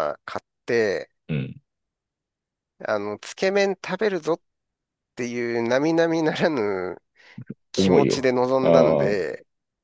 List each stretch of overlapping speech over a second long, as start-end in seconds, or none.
7.8-9.3